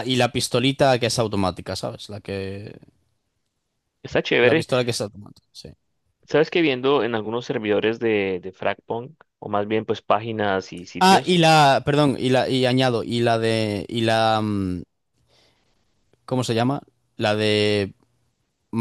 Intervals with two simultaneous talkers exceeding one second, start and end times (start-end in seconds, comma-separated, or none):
none